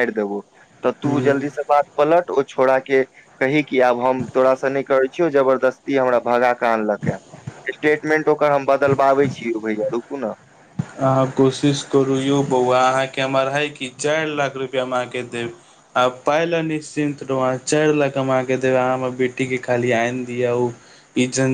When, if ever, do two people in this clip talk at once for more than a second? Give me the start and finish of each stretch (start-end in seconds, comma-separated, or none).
none